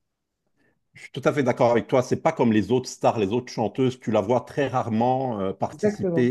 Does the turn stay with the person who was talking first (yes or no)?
yes